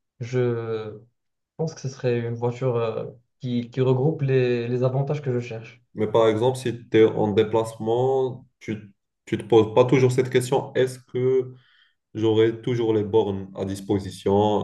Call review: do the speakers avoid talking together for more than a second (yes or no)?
yes